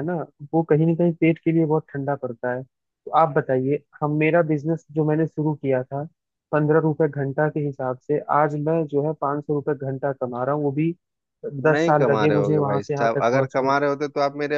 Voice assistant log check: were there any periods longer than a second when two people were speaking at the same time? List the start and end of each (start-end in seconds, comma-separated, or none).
11.7-13.7